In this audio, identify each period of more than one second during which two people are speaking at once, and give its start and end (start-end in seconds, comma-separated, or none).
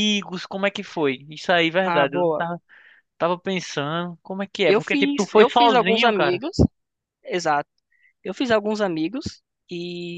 4.7-6.4